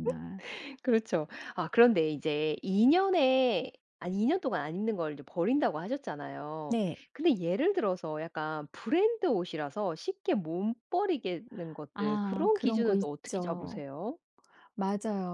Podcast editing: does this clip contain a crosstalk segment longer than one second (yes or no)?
yes